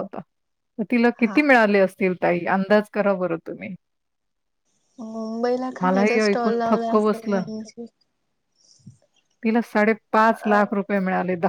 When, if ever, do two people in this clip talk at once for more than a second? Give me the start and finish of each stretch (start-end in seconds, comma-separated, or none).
5.8-7.4